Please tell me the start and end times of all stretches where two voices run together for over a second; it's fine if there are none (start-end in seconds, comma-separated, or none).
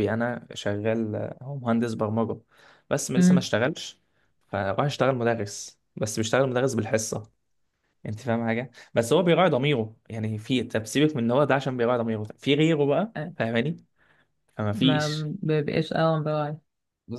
none